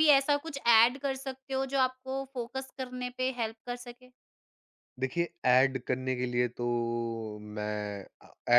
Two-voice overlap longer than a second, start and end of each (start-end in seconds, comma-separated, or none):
none